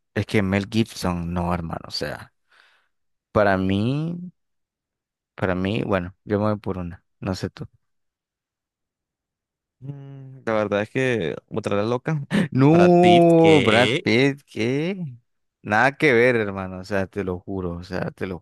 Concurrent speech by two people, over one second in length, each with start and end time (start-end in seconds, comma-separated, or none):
12.5-14.1